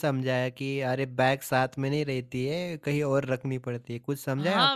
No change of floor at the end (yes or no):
no